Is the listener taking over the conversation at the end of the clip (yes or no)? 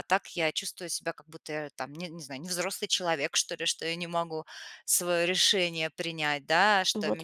no